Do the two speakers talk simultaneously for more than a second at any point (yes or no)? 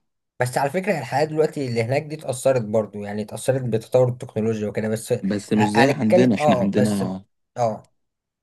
yes